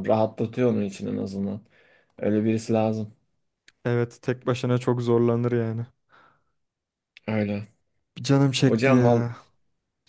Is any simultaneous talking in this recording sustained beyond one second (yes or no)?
no